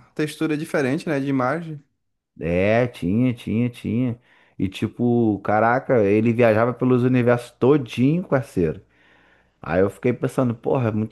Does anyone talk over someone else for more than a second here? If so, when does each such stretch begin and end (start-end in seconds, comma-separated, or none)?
none